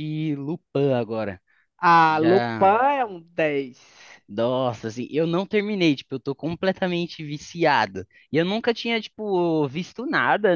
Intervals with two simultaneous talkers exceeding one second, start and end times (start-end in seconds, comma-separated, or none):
none